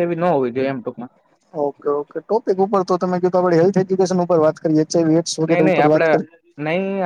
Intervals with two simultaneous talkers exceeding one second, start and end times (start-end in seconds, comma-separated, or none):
none